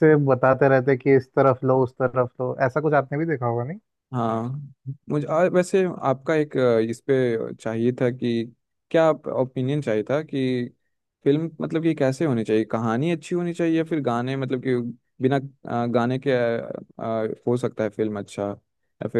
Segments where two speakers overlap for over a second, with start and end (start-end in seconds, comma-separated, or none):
none